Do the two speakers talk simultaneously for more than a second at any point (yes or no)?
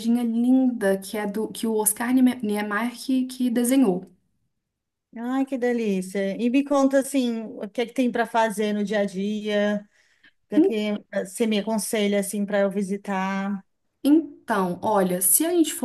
no